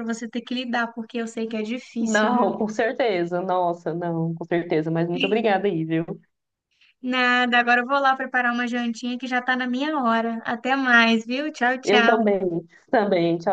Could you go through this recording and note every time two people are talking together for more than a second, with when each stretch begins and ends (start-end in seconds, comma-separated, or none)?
none